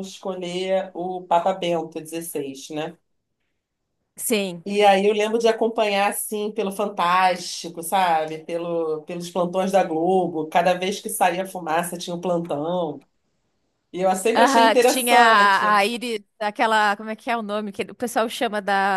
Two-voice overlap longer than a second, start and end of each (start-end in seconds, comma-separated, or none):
14.4-15.7